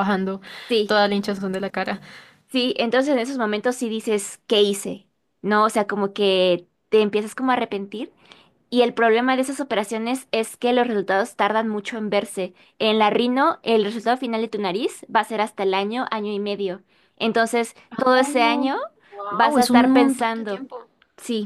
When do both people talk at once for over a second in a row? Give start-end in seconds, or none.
19.3-20.6